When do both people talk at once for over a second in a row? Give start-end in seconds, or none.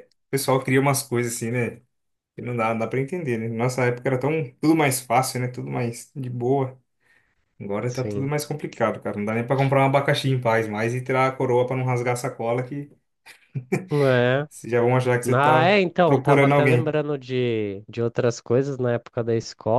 15.3-17.0